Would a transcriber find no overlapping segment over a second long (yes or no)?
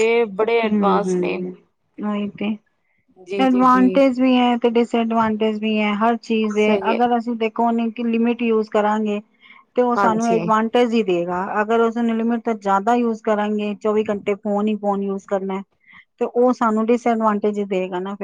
yes